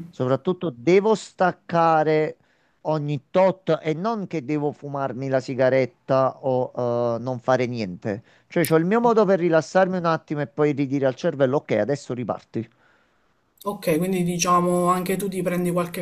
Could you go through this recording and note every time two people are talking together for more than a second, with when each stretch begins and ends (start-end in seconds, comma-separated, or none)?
none